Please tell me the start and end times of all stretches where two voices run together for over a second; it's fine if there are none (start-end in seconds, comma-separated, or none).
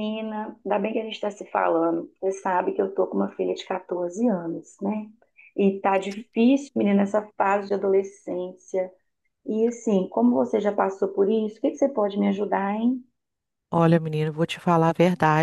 none